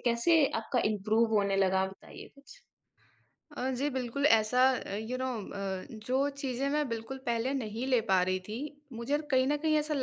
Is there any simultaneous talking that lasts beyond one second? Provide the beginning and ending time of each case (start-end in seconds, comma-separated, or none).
none